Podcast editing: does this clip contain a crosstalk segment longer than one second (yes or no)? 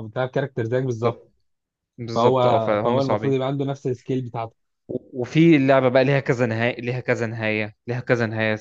yes